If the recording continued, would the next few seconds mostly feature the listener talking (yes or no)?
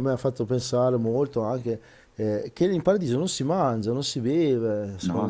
yes